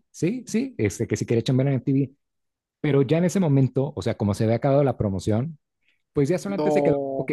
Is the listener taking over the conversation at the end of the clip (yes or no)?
no